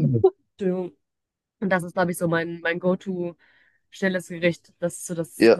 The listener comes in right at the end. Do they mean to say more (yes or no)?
yes